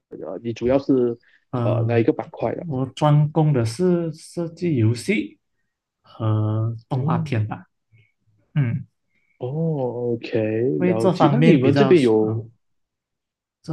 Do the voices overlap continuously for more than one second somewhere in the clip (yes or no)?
yes